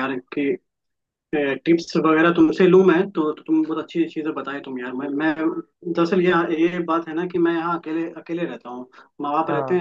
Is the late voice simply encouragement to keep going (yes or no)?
yes